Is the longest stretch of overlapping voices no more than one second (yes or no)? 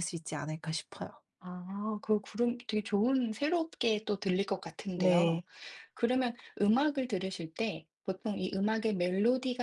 yes